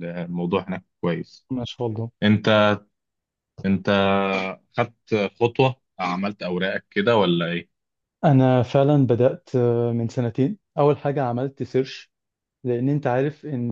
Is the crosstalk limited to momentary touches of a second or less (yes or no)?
yes